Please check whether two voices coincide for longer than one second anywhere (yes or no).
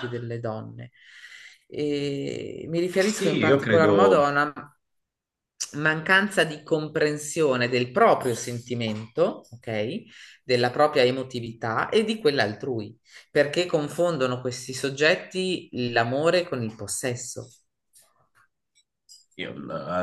yes